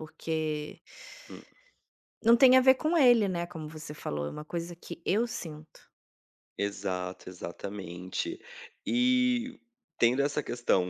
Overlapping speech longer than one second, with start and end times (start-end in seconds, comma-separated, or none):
none